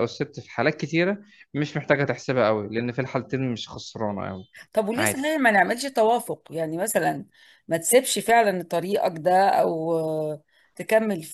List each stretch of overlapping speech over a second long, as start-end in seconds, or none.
none